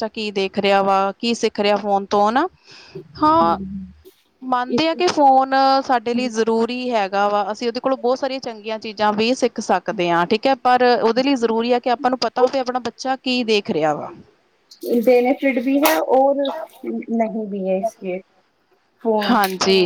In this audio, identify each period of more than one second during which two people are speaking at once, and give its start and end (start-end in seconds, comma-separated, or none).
none